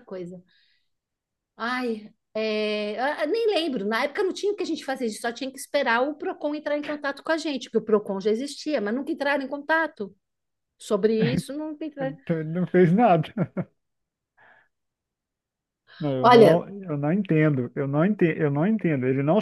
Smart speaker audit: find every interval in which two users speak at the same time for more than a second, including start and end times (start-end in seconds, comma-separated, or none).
none